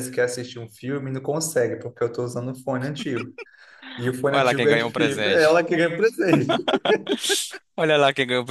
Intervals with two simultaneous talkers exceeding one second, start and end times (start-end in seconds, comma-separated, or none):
4.3-5.6